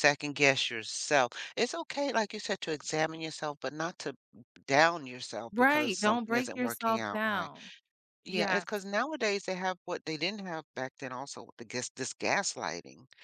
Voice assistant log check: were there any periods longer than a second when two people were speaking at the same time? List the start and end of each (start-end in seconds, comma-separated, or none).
5.5-7.5